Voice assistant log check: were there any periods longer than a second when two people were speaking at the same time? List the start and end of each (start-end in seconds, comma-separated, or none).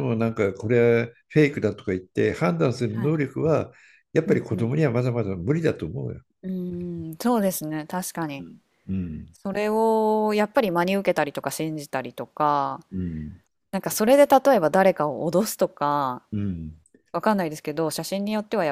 none